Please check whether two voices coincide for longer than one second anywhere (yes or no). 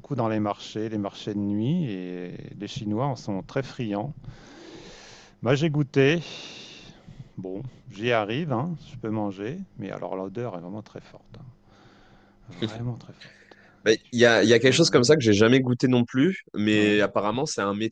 yes